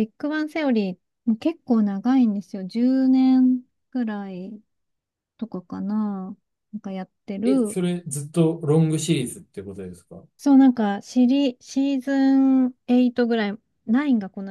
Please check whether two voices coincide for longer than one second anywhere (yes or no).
no